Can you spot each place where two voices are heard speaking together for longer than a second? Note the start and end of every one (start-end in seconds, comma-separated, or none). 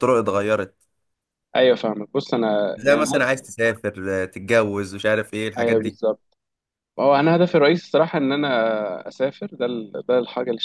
none